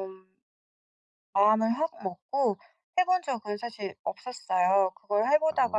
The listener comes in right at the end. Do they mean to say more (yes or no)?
no